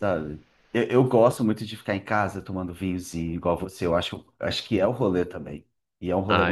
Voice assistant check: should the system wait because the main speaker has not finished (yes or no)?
no